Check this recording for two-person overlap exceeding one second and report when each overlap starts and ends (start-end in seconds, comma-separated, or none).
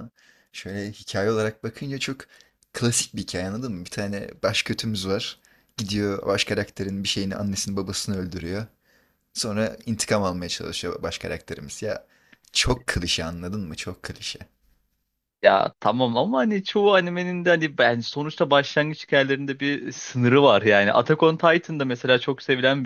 none